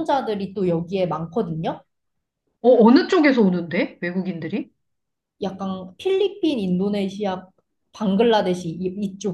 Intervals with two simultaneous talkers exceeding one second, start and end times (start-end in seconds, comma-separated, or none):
none